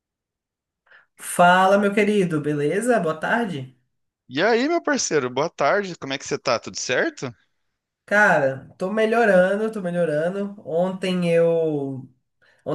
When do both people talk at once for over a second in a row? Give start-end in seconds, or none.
none